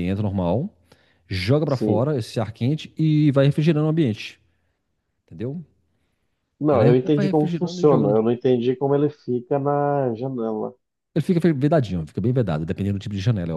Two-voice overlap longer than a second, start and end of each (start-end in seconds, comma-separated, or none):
6.7-8.2